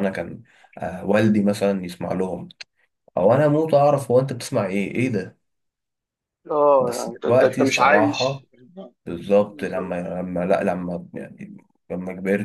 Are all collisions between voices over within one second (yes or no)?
no